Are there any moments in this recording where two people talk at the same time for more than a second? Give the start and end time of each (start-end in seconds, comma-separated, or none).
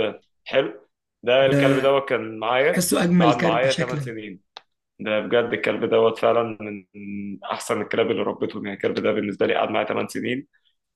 2.7-4.1